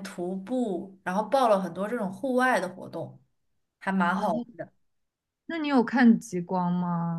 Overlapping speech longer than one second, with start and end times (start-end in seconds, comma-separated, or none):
none